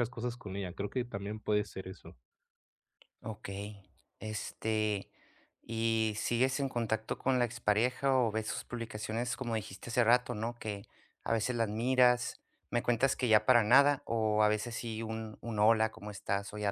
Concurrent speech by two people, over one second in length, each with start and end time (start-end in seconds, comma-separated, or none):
none